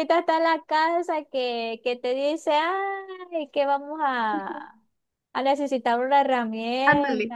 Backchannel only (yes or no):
no